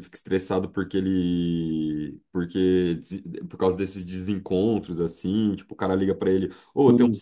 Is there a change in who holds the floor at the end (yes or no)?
no